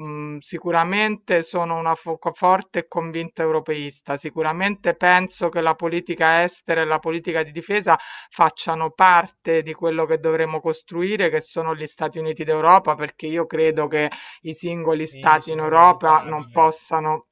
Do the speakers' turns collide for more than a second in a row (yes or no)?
yes